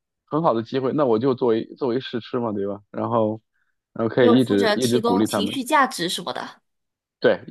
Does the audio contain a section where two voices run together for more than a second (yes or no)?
yes